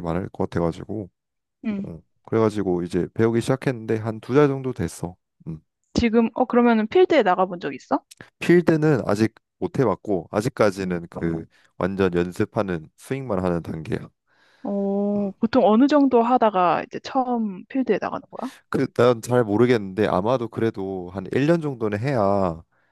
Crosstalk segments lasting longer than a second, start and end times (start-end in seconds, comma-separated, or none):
none